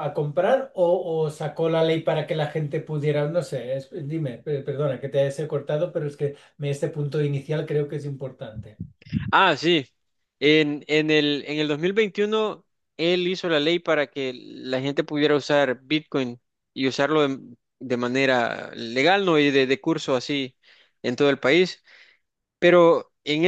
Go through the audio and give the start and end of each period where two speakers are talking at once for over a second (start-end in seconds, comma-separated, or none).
none